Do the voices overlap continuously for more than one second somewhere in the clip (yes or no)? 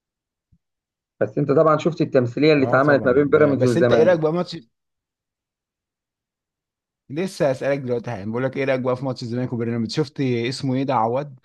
yes